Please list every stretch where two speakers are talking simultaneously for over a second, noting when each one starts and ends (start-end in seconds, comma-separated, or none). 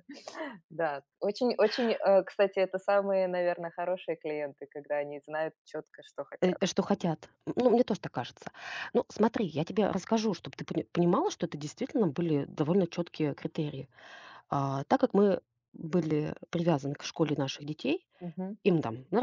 none